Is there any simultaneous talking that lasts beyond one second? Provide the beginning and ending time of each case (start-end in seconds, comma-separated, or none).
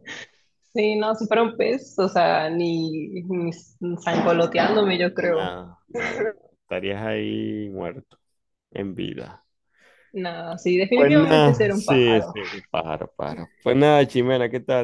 10.9-12.3